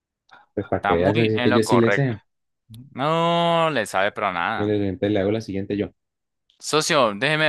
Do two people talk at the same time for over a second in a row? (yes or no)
yes